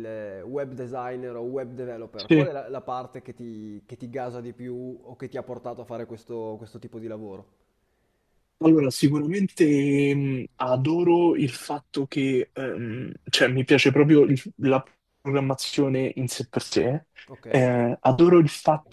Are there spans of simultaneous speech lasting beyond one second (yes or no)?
no